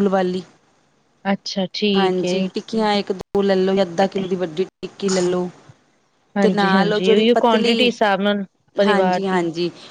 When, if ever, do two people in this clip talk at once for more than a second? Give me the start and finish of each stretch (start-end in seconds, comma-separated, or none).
6.4-7.9